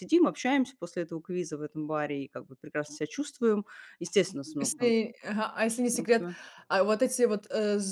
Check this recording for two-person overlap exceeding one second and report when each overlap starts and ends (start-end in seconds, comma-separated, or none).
none